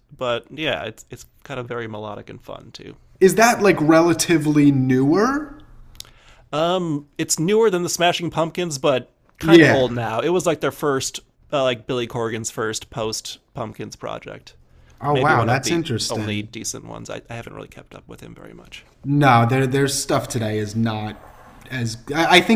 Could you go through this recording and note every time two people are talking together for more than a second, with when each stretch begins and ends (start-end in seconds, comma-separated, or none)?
15.1-16.5